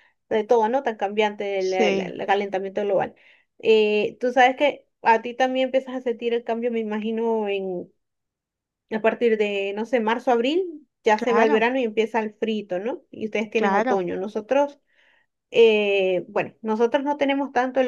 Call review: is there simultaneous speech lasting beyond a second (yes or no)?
no